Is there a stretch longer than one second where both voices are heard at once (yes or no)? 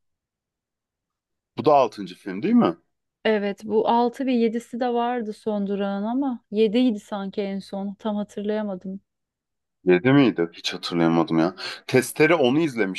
no